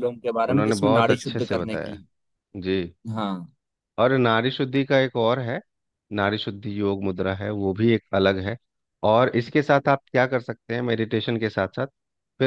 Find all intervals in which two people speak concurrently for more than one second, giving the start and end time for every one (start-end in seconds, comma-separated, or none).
0.5-2.0